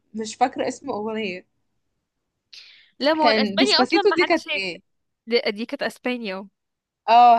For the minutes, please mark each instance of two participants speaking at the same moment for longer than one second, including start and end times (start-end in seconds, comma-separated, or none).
3.2-4.6